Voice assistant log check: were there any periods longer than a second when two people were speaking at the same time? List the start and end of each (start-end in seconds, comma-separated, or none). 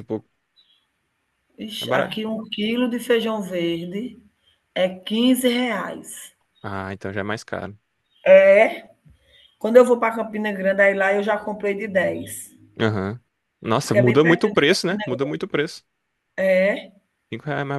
13.8-15.0